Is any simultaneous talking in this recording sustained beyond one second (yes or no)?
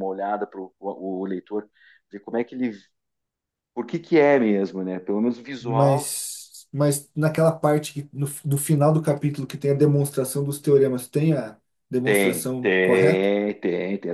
yes